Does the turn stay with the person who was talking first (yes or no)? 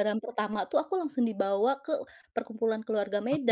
no